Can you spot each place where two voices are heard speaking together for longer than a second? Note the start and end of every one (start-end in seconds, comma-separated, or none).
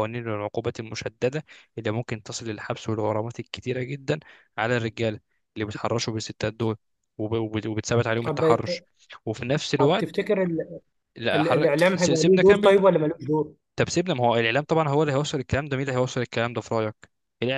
11.3-12.8